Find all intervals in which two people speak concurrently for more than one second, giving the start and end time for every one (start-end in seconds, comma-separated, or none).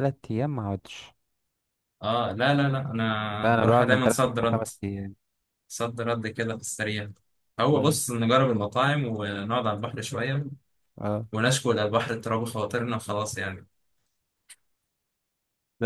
3.4-4.7